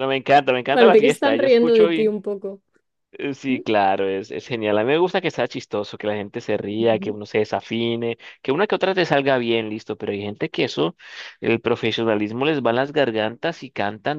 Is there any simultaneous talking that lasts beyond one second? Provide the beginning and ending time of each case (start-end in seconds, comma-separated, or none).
0.7-1.9